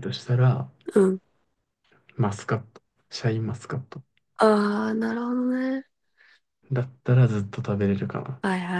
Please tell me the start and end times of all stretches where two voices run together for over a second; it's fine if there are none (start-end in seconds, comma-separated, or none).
none